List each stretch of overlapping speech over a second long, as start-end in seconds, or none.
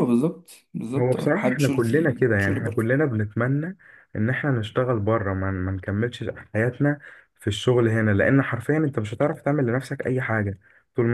1.0-2.6